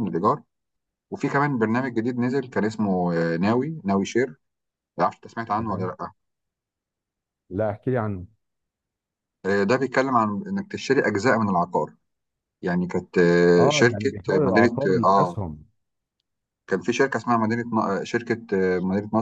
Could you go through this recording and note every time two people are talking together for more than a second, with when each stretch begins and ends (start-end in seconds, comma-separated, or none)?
13.6-15.4